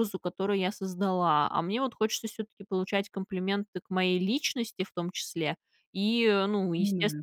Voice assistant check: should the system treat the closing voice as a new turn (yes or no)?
no